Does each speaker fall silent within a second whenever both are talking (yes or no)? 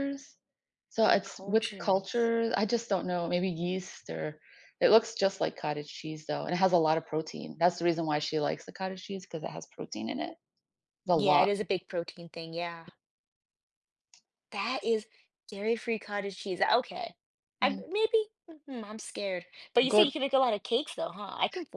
no